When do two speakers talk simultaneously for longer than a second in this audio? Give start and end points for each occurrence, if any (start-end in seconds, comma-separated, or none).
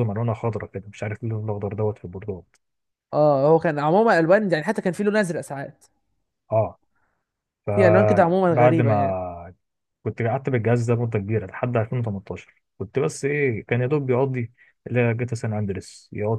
7.7-9.2